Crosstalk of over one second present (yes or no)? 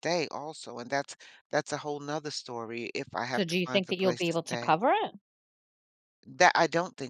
yes